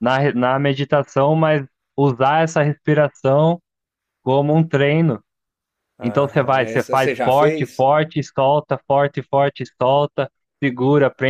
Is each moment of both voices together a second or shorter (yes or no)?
no